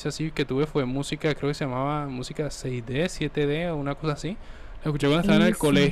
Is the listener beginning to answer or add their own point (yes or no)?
no